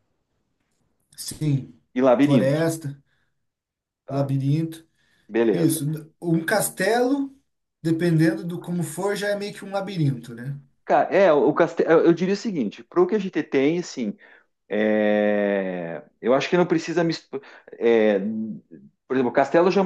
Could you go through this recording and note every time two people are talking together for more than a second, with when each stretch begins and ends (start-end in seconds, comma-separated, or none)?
none